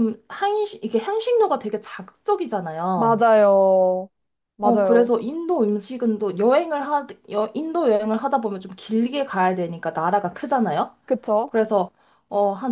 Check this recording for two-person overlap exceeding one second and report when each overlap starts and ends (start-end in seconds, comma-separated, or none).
none